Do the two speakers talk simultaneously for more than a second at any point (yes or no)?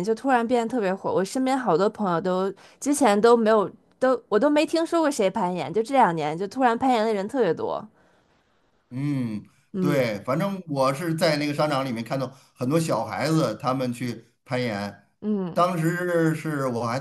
no